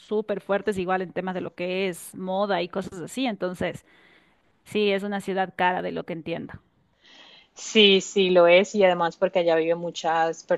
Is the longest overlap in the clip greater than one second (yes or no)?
no